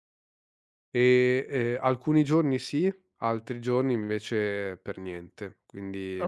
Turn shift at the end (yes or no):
yes